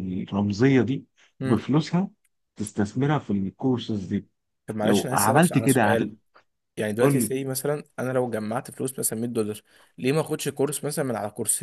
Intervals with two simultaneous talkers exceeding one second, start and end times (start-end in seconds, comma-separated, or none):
4.8-6.1